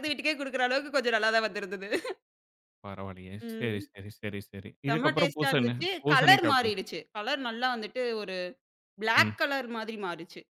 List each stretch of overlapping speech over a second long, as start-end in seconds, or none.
4.9-6.8